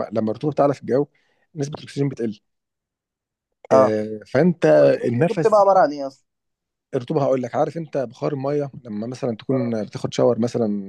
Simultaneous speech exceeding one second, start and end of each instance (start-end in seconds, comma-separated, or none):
none